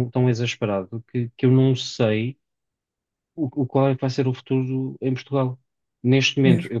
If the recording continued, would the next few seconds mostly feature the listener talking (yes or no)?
no